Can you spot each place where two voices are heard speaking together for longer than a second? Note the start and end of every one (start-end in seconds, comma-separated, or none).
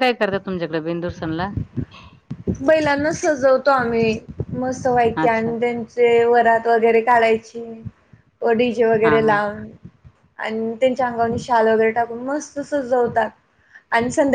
none